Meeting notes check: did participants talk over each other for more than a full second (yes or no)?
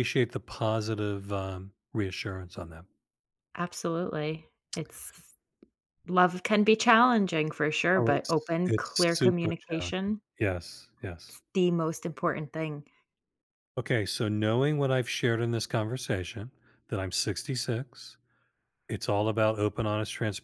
yes